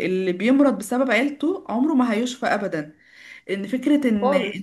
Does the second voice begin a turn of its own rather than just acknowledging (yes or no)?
no